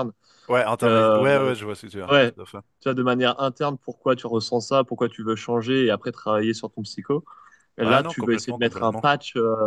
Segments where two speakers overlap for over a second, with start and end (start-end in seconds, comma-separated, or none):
7.8-9.0